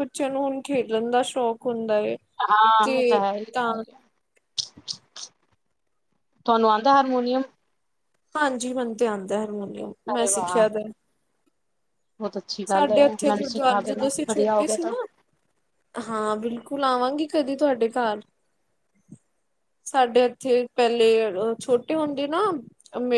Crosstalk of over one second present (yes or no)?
yes